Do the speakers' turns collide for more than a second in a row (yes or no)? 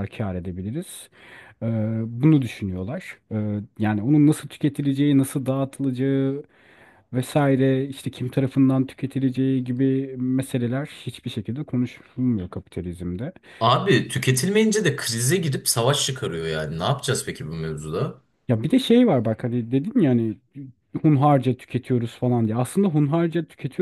no